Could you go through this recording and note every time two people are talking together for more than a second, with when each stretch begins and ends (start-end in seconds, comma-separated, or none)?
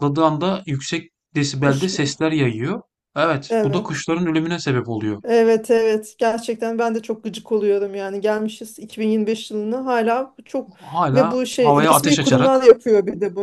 11.1-12.6